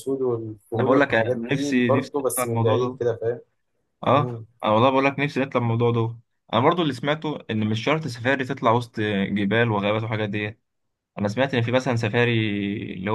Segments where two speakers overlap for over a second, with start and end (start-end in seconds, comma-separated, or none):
0.8-3.0